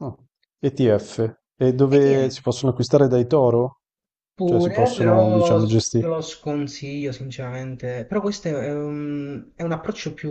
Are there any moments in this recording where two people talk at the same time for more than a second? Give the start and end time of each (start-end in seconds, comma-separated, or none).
4.4-6.0